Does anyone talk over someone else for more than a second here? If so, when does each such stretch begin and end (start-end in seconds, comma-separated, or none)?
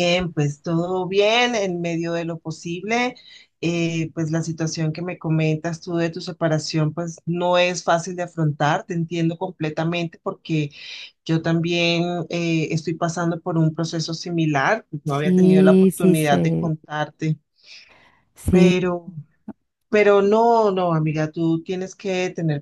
15.0-16.7